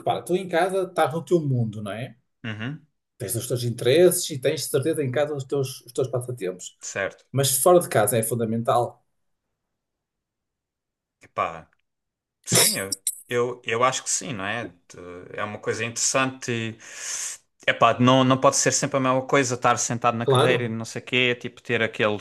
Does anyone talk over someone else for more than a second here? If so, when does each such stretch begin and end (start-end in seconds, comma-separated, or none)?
none